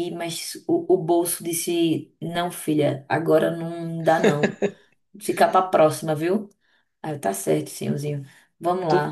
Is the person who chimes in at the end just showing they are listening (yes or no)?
no